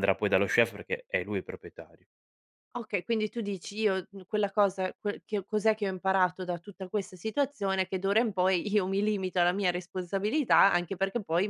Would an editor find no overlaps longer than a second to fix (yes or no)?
yes